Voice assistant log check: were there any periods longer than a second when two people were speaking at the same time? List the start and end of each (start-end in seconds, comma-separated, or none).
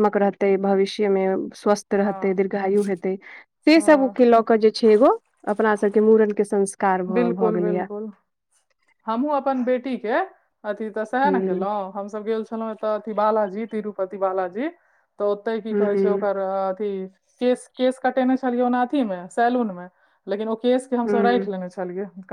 none